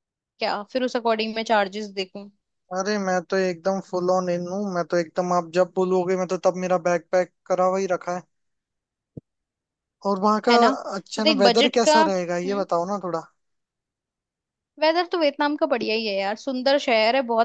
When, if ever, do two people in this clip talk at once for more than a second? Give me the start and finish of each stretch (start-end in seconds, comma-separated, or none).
11.1-12.6